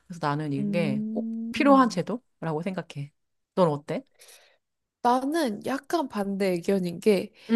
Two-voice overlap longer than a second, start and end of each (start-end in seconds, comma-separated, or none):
0.6-2.0